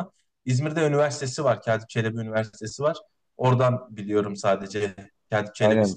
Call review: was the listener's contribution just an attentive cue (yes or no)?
no